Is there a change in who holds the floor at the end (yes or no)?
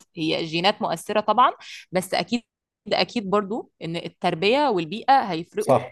yes